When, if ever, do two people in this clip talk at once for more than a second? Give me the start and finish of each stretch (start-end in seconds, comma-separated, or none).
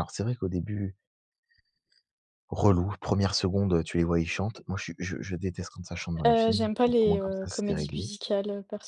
6.2-8.1